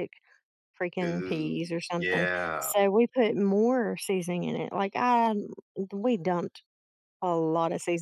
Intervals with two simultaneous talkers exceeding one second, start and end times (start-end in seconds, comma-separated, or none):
1.0-2.7